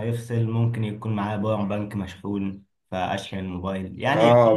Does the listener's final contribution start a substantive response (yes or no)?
yes